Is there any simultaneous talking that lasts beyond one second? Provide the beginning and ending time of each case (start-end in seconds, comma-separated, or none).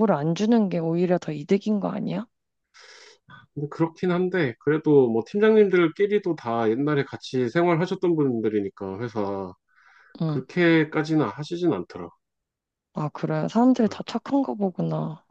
none